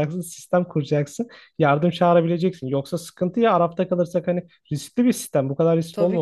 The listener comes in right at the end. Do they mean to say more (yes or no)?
yes